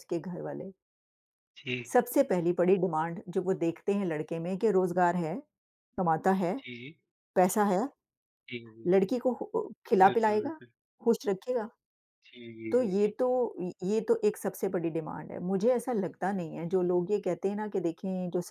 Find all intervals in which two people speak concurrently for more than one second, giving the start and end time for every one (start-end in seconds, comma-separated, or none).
none